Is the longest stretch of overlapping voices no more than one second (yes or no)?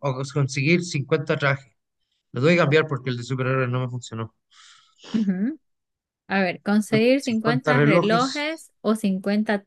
no